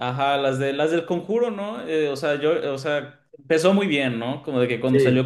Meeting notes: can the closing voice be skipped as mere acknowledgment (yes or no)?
yes